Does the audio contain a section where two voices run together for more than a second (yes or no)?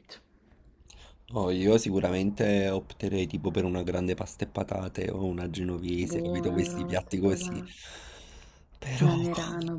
yes